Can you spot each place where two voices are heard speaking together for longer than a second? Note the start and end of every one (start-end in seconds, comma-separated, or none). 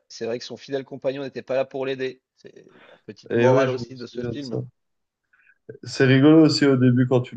3.3-4.6